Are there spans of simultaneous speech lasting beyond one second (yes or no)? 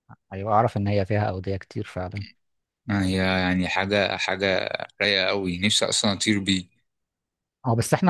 no